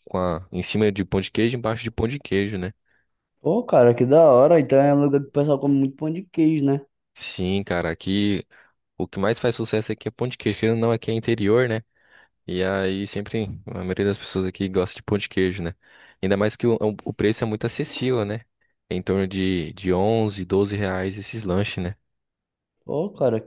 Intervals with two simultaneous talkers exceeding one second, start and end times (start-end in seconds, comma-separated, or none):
none